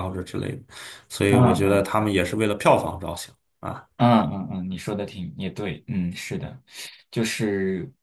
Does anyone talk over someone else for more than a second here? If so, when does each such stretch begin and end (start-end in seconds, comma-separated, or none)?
none